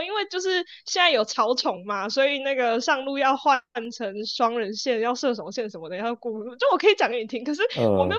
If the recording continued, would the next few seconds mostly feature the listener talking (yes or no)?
no